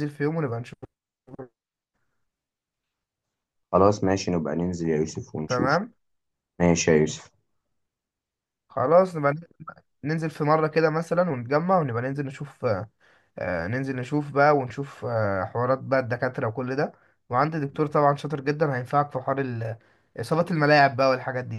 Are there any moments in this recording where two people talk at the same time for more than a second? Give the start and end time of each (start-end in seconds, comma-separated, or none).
none